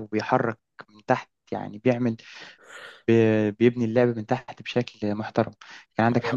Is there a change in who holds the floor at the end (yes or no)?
no